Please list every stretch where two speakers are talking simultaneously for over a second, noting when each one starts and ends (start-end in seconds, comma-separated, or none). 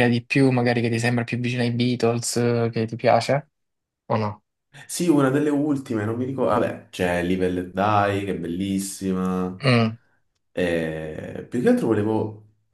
none